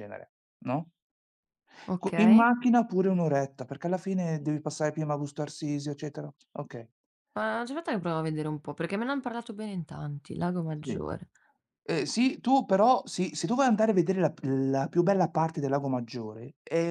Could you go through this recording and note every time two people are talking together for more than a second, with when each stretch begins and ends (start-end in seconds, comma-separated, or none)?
none